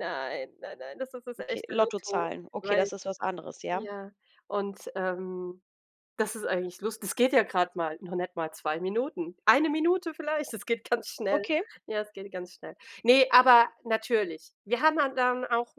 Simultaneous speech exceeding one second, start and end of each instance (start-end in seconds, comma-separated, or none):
1.4-2.9